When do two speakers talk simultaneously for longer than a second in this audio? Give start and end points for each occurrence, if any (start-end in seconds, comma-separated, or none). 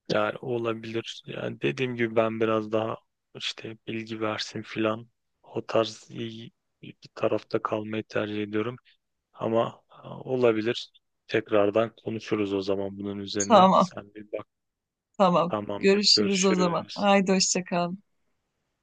15.5-17.1